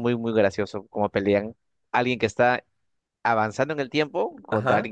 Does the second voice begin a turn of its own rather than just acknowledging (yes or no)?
no